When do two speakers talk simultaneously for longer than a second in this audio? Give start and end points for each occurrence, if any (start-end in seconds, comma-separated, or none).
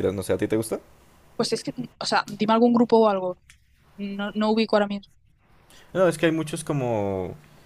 none